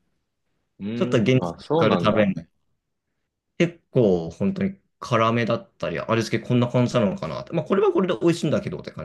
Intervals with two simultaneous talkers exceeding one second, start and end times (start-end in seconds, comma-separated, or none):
0.9-2.3